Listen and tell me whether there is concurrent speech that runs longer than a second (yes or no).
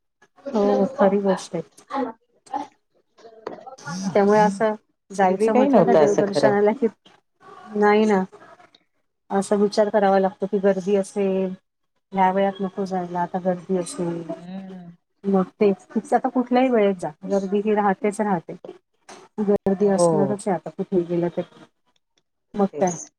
yes